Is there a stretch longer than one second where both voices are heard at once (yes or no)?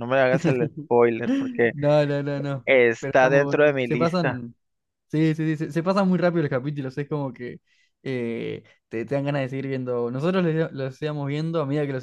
yes